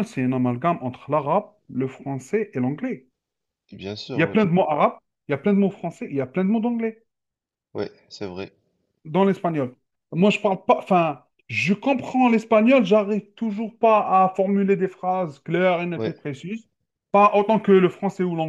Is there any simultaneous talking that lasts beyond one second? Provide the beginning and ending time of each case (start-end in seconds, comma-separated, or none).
none